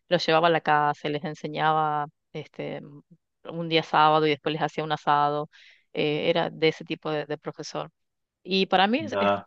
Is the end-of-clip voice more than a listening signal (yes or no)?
no